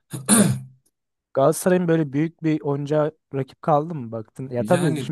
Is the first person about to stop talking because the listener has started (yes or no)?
no